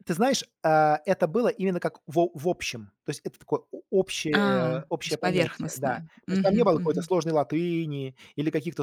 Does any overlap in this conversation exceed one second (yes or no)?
yes